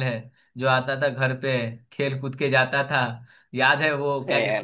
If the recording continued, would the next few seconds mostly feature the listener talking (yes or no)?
no